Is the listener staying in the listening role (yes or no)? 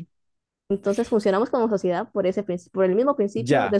no